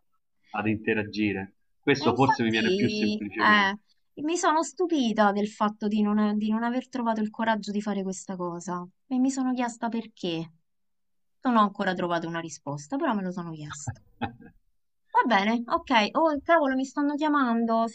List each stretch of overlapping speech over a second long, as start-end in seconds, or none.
2.0-3.7